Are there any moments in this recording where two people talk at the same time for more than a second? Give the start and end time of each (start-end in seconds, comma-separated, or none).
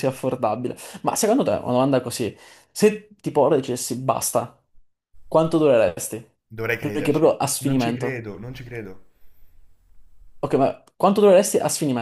6.8-8.2